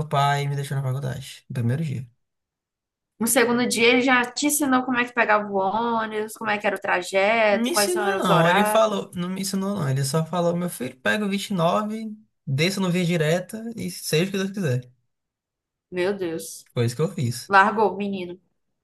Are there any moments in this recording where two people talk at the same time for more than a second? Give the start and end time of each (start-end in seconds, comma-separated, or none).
7.5-8.8